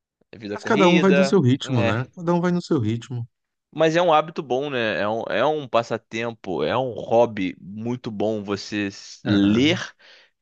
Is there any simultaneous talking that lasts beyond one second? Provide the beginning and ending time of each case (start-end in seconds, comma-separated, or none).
0.5-2.0